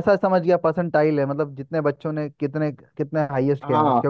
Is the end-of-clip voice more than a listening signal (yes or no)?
yes